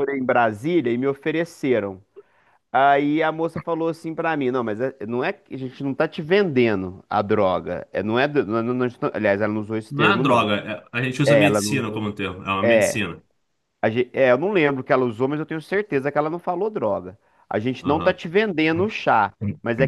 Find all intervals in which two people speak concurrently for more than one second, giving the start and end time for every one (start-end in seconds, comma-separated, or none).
none